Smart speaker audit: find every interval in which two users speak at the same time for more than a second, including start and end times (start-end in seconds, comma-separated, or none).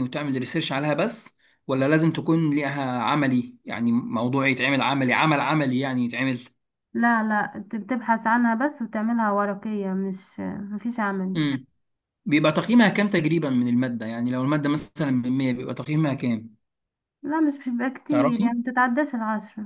none